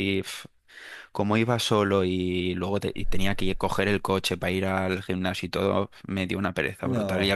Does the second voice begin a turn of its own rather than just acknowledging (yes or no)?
no